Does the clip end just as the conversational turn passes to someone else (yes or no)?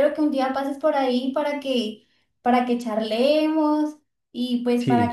no